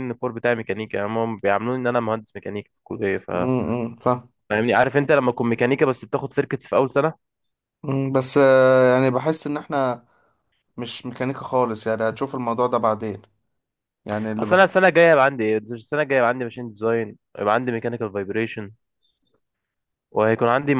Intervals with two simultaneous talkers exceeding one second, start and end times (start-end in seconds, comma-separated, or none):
none